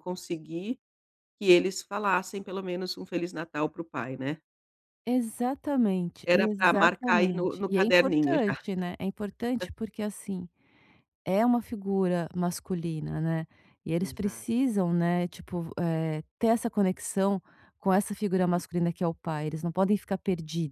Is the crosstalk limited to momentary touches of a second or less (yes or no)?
no